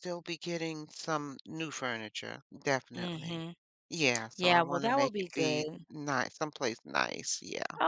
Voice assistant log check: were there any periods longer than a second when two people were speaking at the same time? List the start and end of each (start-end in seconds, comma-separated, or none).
4.4-5.8